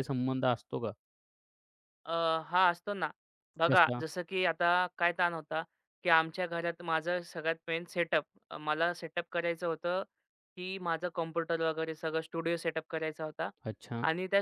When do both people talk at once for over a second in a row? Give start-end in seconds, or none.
none